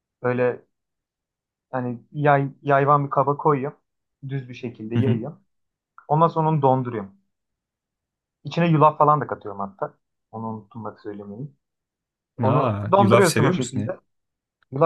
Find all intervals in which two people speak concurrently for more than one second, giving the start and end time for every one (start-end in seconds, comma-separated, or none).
12.4-14.0